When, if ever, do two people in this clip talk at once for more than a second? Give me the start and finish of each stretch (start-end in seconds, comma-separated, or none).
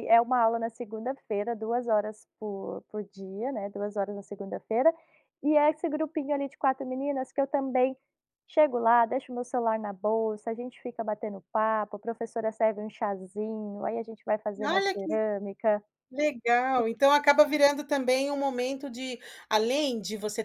none